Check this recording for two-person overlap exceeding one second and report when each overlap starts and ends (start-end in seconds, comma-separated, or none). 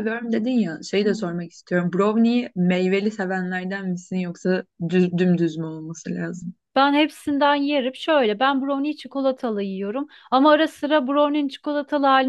none